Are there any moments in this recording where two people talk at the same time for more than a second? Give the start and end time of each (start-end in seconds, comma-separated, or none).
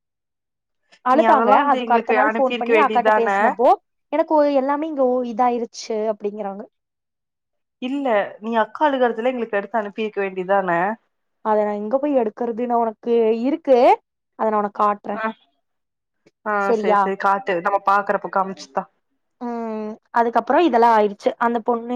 1.2-3.3